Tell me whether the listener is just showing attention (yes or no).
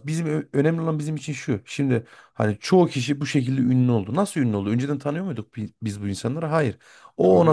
yes